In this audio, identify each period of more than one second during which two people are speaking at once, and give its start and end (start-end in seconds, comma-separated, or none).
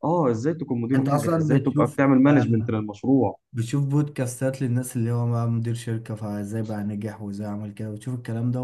0.9-2.7